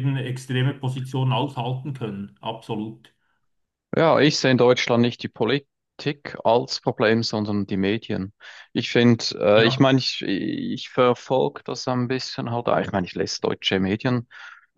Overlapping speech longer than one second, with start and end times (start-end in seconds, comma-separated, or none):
none